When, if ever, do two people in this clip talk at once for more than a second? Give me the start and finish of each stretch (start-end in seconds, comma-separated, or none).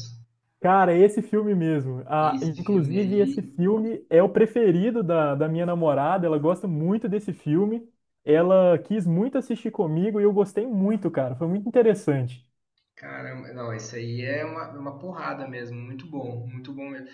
2.2-3.4